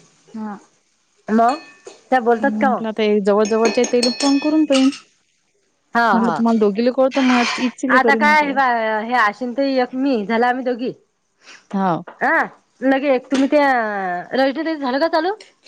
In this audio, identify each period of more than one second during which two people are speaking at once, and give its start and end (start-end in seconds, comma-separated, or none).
none